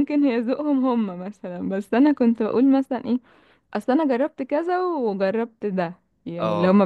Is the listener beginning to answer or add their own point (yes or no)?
no